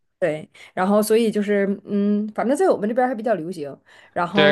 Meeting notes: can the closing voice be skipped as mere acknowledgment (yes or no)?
no